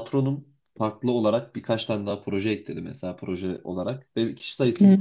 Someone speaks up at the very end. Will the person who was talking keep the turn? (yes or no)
yes